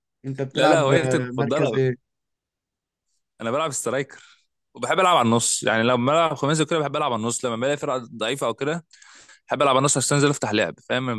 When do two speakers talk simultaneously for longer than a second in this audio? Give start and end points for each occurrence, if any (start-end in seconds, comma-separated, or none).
0.5-1.8